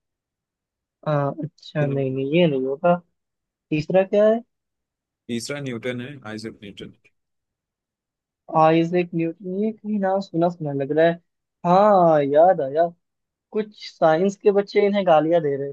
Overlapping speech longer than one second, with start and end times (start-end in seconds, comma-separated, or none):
none